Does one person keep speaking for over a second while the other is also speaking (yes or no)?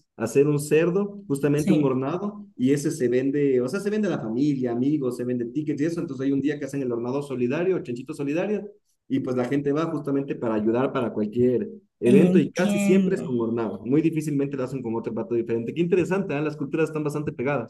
yes